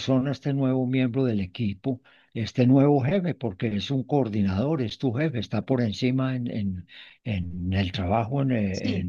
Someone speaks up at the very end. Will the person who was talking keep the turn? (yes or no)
yes